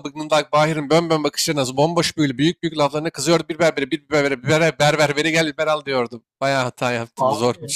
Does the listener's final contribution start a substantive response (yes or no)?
yes